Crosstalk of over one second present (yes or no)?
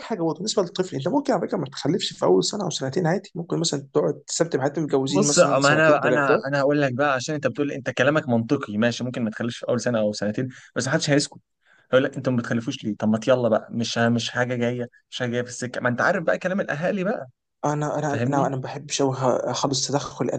yes